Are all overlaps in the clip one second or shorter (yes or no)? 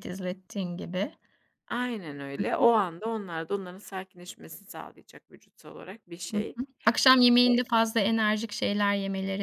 yes